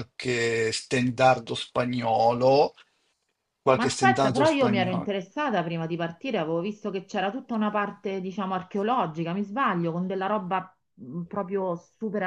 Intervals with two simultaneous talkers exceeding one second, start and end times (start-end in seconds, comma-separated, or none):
3.8-5.1